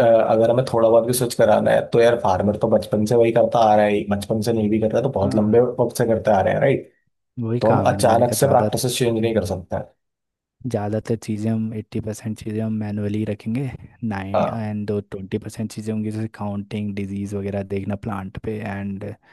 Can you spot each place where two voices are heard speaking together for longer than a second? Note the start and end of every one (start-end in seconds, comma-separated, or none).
7.6-9.5